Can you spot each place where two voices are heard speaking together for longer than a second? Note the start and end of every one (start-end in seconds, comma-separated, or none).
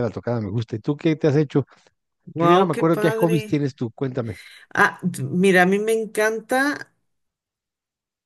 2.4-3.6